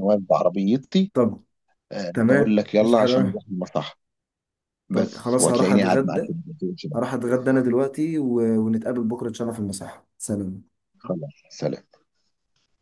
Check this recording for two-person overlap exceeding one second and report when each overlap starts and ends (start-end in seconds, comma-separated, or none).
2.1-3.4, 4.9-6.3